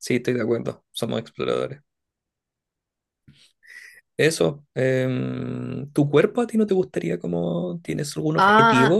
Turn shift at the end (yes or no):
yes